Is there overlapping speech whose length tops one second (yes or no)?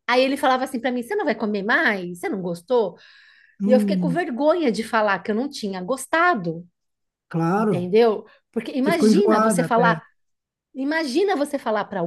yes